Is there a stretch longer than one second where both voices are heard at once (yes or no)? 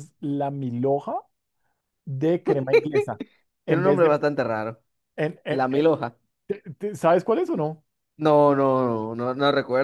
no